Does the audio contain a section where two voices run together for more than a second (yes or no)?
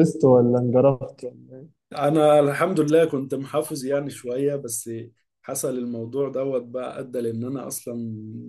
no